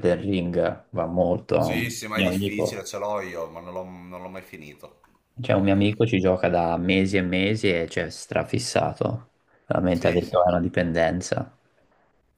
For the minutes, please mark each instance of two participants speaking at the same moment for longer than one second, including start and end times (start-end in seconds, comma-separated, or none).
1.6-2.9